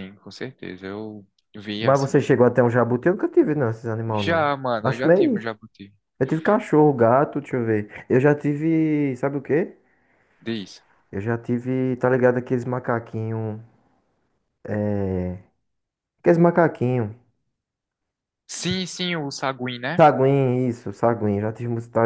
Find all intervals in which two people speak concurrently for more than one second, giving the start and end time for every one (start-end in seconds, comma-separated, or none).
4.1-5.4